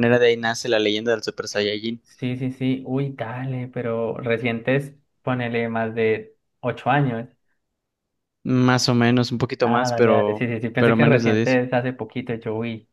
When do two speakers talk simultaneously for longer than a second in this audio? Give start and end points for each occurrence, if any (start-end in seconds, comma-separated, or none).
9.7-11.6